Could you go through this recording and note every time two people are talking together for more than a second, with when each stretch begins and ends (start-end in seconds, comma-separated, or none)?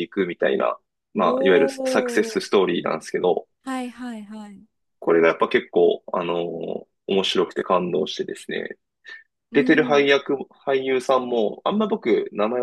1.1-2.5